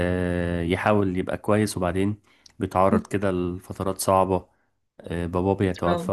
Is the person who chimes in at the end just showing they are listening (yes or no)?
yes